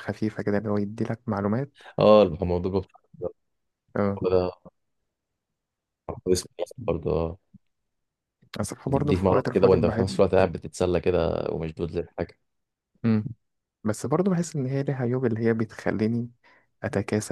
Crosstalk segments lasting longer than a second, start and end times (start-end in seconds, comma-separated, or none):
8.9-10.2